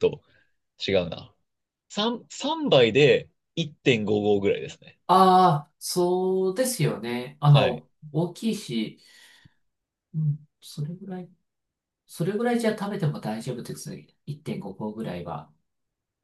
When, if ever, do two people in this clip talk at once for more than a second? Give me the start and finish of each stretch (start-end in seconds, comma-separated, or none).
none